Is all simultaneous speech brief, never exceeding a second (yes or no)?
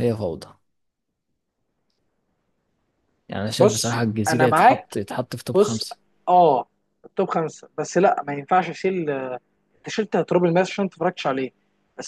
no